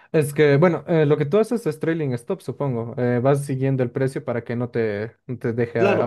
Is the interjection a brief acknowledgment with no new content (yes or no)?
no